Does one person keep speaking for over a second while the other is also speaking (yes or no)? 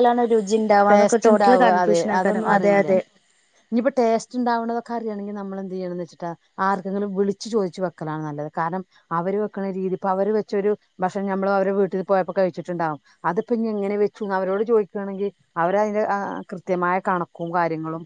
no